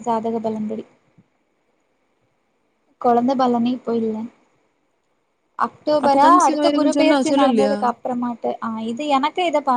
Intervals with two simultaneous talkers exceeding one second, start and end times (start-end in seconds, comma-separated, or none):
6.0-7.7